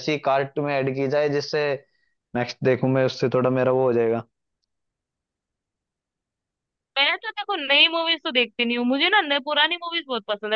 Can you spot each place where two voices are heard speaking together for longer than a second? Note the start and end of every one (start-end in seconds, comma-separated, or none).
none